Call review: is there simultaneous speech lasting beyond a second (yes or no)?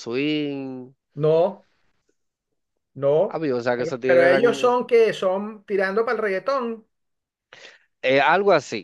yes